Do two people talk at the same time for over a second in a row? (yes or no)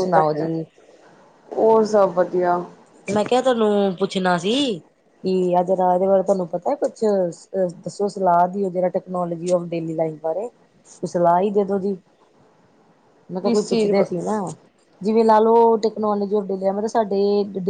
no